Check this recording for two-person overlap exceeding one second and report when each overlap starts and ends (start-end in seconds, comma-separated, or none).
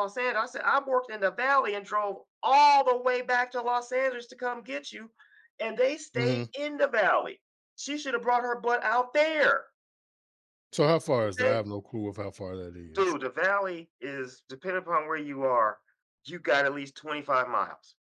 none